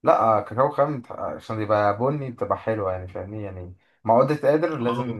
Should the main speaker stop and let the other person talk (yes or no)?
no